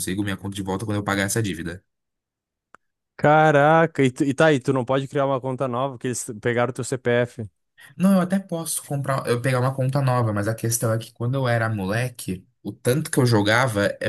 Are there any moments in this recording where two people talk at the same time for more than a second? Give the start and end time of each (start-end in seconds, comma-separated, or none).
none